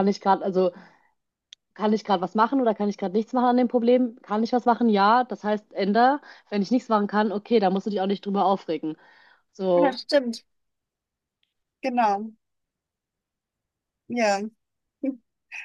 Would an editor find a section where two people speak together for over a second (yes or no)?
no